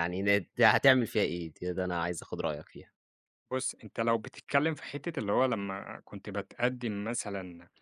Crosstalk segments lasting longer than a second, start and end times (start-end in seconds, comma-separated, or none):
none